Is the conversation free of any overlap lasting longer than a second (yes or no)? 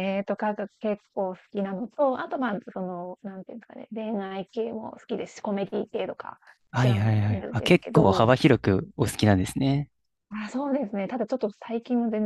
no